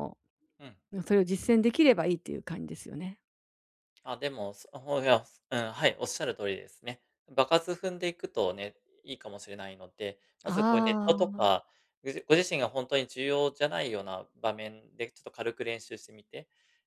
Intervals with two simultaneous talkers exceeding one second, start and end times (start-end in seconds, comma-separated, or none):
10.4-11.7